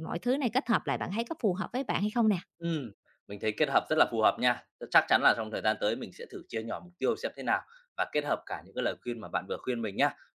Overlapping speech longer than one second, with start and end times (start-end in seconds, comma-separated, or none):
none